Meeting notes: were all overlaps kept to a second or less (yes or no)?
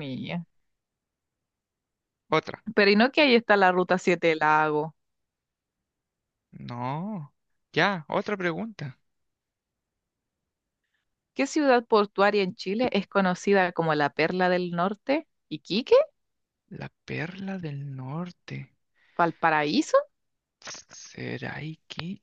yes